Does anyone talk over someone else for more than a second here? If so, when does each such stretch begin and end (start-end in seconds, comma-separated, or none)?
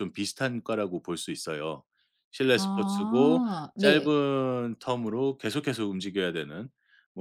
2.5-4.2